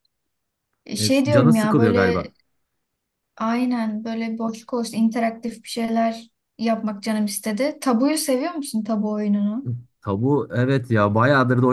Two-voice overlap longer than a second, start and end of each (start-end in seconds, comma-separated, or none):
1.0-2.3